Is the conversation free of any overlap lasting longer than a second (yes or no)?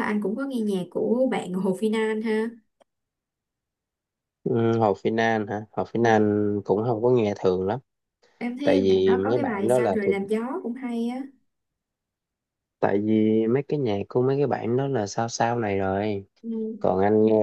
no